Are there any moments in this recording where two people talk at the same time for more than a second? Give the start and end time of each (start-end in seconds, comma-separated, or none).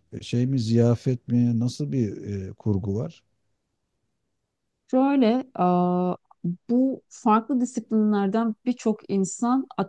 none